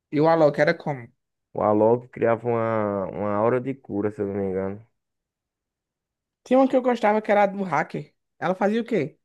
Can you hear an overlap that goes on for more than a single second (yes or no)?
no